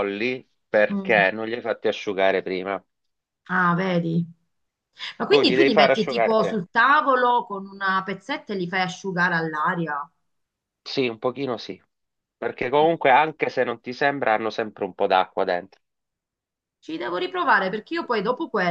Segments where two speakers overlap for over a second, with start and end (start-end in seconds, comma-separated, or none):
5.3-6.6